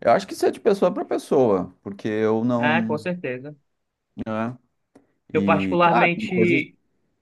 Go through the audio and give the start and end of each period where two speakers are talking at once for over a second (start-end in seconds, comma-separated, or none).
5.3-6.7